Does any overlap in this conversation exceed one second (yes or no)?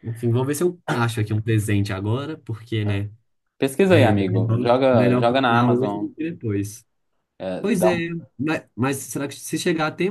yes